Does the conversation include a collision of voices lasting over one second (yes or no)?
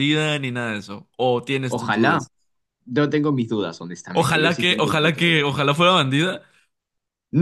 yes